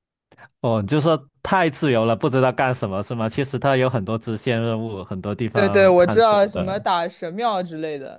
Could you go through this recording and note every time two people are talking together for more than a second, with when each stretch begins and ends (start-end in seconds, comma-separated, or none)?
5.5-6.8